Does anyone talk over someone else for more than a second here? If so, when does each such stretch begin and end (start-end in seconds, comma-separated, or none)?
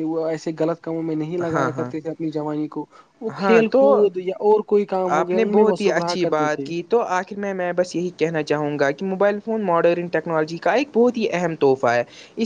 5.2-6.7